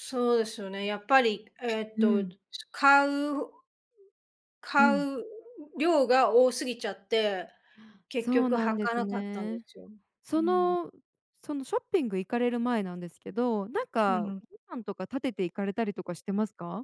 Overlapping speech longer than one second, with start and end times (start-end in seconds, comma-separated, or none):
8.2-9.7